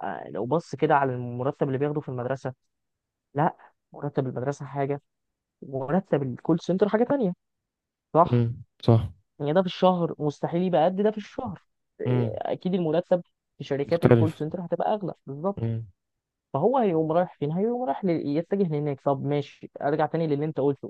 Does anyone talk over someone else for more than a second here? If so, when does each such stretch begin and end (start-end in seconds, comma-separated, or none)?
none